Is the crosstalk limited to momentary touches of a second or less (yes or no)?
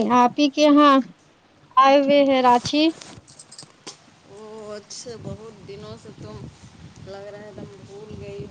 yes